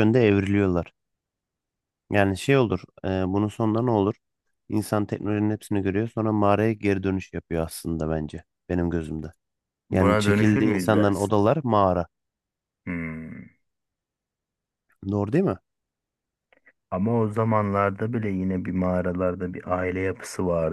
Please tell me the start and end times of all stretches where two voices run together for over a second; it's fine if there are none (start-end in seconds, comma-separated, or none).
9.9-11.3